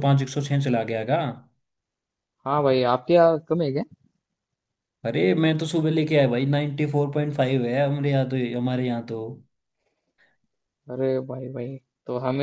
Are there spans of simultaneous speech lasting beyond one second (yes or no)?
no